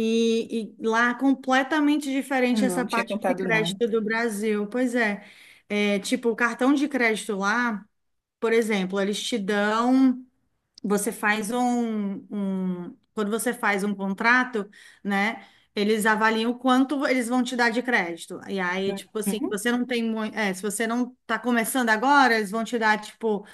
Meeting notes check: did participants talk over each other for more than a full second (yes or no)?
yes